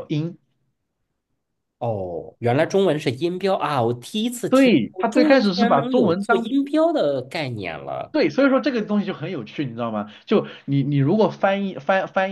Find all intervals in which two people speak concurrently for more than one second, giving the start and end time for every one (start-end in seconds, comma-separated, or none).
4.5-6.5